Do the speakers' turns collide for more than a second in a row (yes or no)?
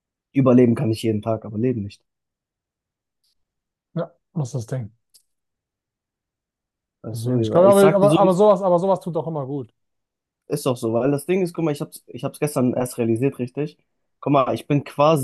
yes